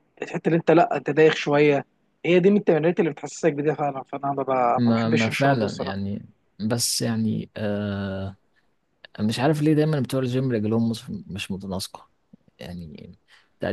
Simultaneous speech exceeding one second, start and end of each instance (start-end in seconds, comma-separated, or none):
4.8-6.0